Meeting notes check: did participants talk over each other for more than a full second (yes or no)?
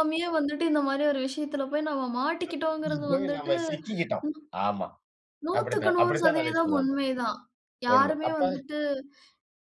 yes